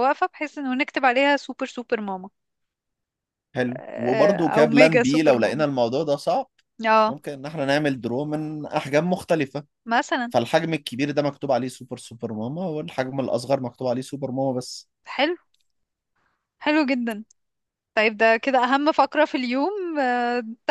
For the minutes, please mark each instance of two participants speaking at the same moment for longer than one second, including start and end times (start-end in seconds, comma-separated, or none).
3.7-5.7